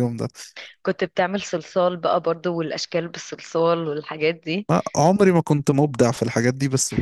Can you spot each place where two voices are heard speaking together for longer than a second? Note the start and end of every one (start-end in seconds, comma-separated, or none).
none